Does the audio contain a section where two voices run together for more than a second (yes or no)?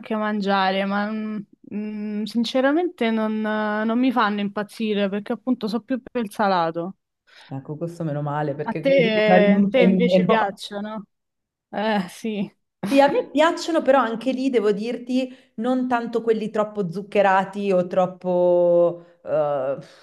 yes